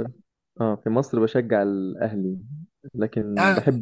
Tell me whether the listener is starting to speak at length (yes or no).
no